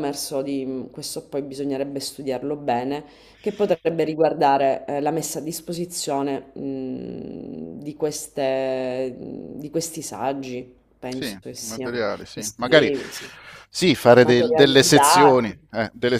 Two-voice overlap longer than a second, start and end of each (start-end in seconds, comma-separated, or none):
11.1-12.9, 14.2-15.7